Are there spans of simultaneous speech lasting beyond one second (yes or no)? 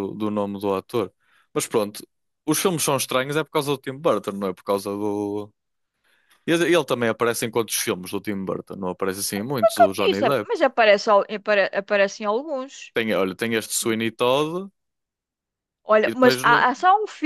no